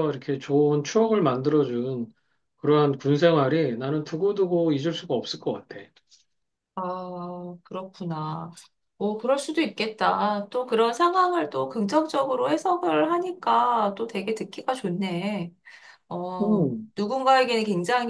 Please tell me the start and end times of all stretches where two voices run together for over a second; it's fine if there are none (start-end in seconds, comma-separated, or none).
none